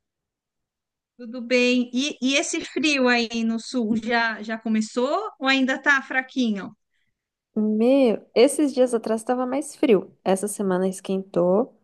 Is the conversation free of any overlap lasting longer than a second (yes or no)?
yes